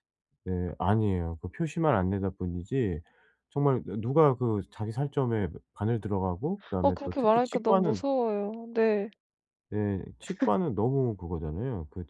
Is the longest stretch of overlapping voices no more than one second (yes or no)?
no